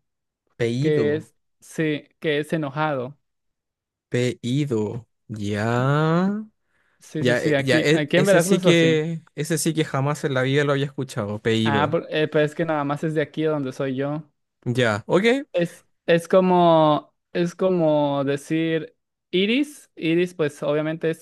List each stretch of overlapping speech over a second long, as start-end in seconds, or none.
7.2-9.0